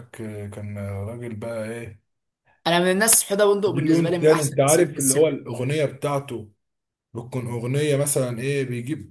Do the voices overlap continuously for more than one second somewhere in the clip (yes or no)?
yes